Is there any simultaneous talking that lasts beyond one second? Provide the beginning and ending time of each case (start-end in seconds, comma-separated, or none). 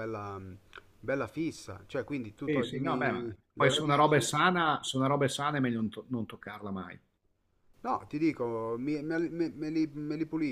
2.4-4.4